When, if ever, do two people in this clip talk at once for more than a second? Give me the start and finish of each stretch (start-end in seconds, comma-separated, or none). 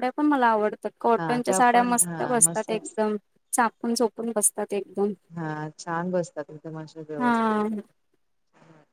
1.2-2.7